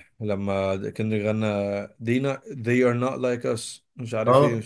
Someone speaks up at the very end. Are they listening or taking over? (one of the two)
taking over